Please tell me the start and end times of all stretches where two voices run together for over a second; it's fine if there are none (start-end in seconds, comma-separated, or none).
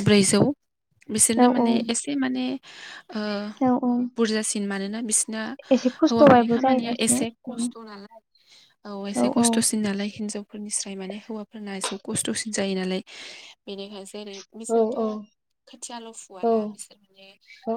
5.8-7.6